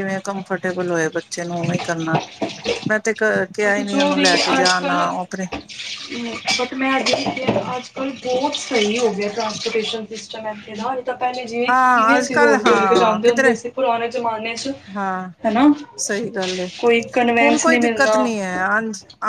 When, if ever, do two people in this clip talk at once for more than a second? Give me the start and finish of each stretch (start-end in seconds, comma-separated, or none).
11.7-13.5